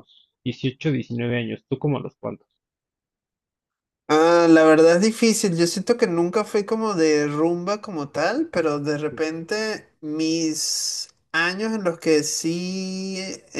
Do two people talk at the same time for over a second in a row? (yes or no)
no